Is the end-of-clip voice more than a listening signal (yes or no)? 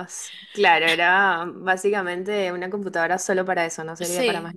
yes